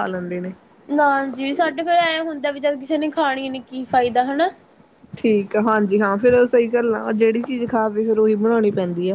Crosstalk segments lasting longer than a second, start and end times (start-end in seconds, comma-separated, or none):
none